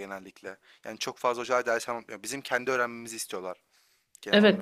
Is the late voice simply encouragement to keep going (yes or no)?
no